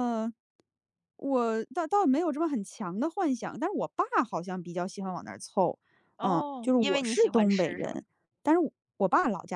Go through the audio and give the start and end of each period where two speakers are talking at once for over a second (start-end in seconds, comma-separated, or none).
6.2-8.0